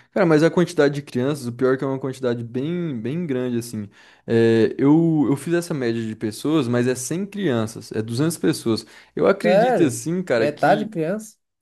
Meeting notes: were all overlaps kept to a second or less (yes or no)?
no